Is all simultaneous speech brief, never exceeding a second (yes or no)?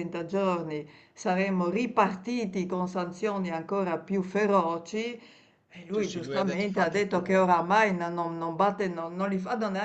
no